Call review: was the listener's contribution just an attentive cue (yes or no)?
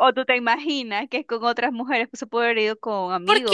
no